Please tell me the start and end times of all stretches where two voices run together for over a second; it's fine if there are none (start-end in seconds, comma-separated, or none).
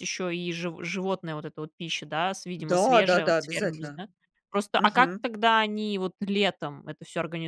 2.6-4.0